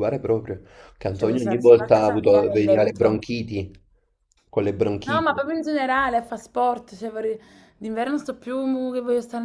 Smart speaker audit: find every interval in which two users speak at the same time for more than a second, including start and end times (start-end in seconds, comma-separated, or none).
1.1-3.2